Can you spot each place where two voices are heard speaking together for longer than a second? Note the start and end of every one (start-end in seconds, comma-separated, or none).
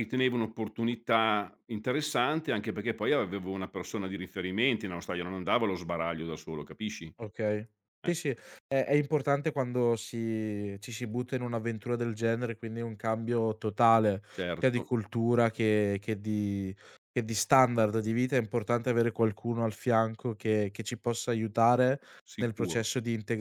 none